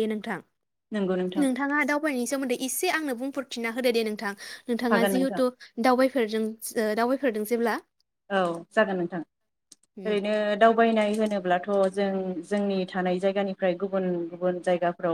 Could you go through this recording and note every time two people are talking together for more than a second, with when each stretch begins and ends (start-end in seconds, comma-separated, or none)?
none